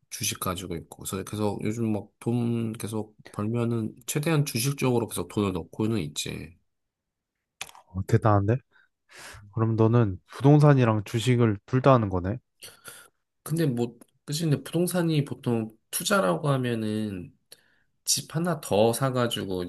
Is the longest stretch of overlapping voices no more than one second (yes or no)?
yes